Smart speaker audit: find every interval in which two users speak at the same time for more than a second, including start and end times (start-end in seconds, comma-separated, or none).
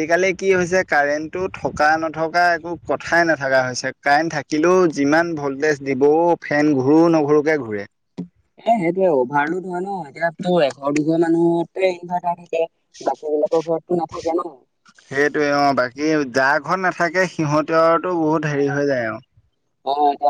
none